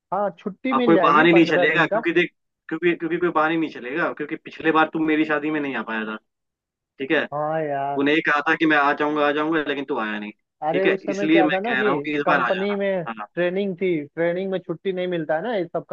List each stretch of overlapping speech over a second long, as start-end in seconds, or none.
0.7-2.0, 10.7-13.3